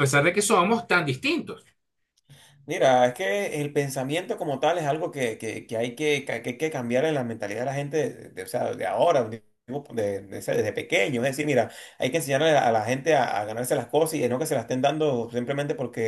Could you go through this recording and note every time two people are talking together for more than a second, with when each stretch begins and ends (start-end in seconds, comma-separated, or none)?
none